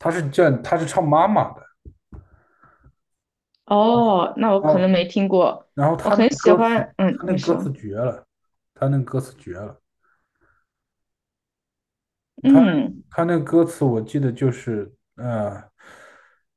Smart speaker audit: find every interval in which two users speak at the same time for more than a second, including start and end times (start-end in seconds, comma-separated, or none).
6.0-7.7